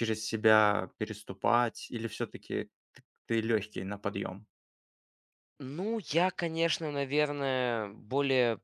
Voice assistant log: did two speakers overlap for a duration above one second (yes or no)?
no